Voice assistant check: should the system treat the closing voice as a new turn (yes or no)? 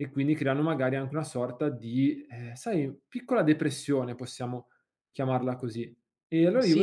yes